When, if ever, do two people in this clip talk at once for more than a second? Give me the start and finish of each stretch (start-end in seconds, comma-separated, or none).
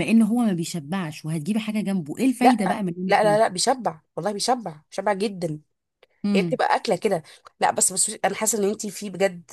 none